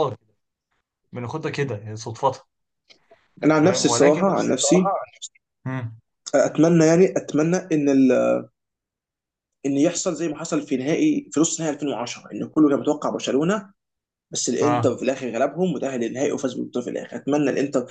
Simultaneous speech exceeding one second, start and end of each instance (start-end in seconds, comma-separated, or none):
3.5-4.9